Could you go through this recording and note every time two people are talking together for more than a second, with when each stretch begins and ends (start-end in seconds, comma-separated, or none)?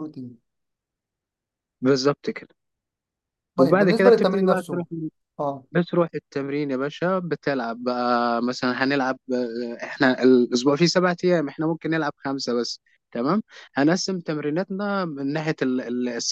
3.6-4.8